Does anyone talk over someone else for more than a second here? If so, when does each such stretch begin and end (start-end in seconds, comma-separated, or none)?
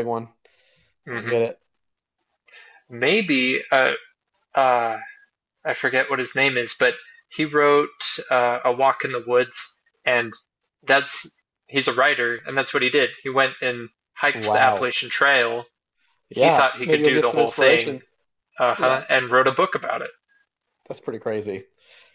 16.3-18.0